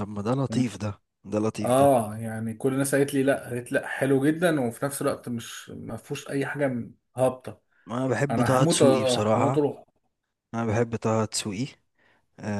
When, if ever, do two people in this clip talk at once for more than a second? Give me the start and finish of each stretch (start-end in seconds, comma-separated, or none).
8.3-9.7